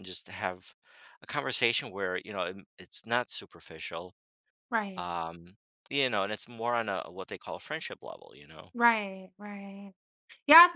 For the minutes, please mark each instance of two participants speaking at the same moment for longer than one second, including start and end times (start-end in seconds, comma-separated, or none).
none